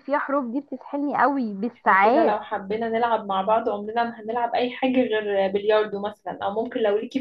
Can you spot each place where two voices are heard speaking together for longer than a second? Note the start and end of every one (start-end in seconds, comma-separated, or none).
none